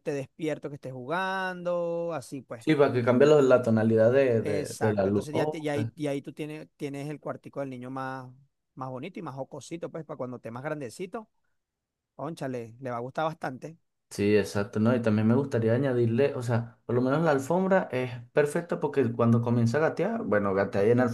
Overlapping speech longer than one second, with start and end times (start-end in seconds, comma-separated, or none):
4.4-5.7